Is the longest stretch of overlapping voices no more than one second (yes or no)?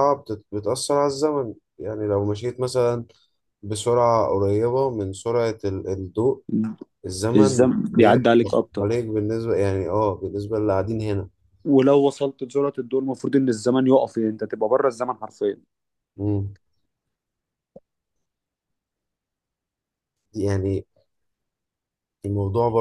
no